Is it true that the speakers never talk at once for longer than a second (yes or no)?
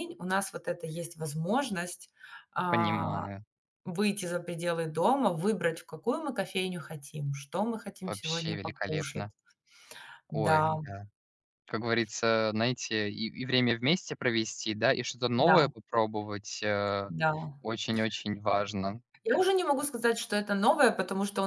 no